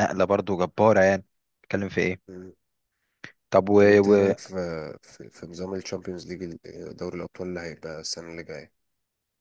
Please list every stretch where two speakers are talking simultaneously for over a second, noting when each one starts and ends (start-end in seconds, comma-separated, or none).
none